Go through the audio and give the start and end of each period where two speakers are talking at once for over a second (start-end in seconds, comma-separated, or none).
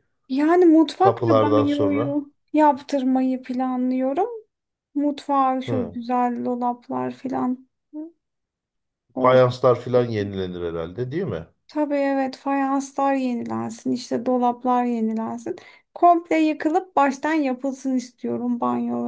1.0-2.2